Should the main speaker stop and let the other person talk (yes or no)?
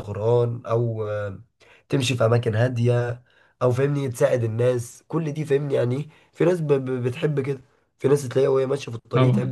no